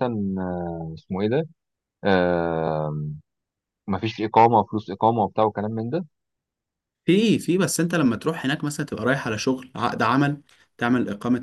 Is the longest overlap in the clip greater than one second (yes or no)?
no